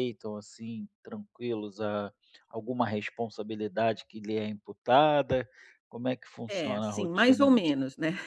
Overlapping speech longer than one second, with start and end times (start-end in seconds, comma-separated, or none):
6.5-7.8